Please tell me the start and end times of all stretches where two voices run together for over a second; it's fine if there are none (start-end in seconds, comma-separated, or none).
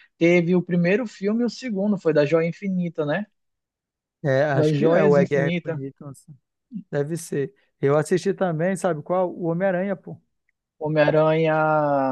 4.5-5.8